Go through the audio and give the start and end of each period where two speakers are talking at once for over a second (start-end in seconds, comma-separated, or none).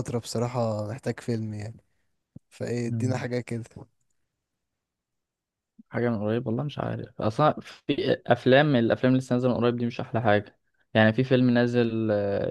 none